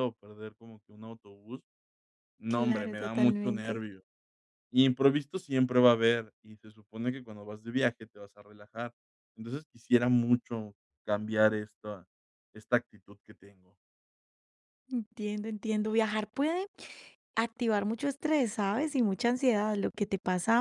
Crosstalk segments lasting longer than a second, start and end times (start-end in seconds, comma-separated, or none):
2.5-3.9